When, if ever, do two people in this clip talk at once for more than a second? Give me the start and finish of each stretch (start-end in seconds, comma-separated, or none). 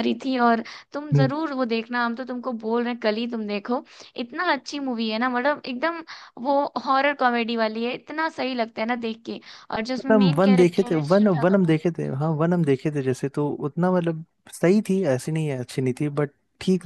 10.0-11.8